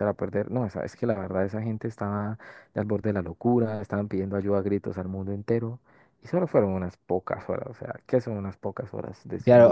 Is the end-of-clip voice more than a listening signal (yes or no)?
yes